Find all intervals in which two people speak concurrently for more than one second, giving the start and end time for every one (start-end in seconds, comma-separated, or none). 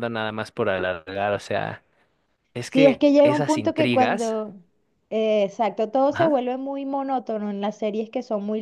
2.7-4.4